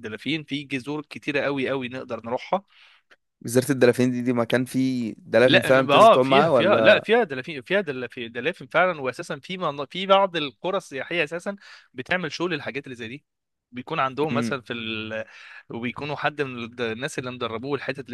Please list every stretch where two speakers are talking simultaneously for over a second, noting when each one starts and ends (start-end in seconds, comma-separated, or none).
5.5-7.1